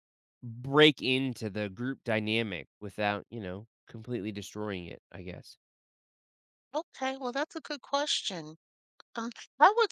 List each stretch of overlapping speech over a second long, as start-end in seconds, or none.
none